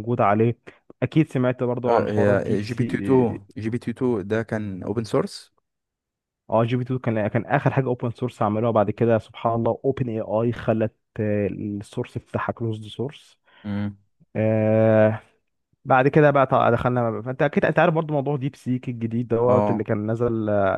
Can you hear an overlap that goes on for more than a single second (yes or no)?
yes